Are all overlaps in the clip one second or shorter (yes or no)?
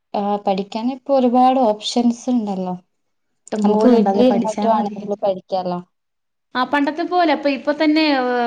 no